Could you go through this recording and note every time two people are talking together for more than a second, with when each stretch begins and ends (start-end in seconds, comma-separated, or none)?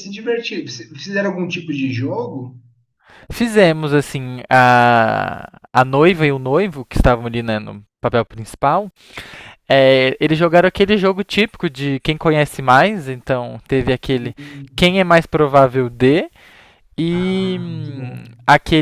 17.1-18.3